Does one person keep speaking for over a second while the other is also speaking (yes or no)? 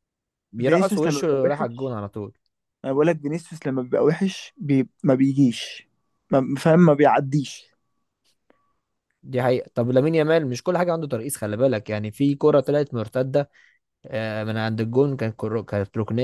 yes